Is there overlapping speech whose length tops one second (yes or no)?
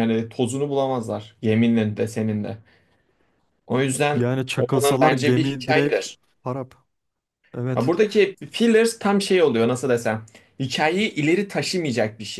yes